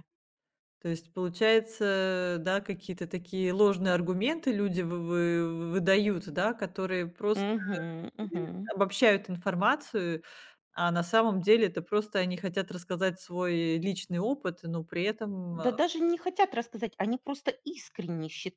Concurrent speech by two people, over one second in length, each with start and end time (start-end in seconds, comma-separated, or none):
none